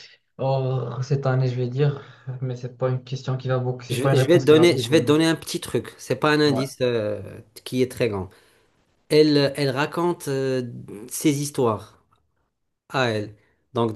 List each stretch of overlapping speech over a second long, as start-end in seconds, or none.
3.9-5.1